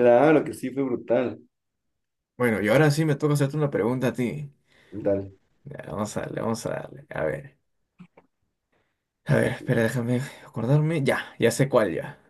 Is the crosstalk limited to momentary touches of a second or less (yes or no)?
yes